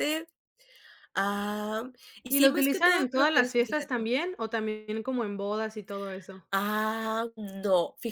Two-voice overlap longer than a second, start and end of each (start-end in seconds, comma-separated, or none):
2.3-4.1